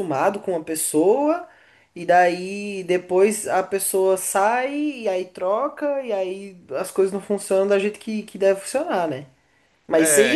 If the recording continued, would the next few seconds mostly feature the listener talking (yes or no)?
no